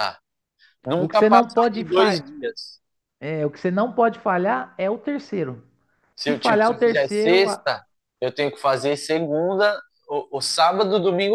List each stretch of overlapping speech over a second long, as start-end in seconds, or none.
1.0-2.2, 6.2-7.6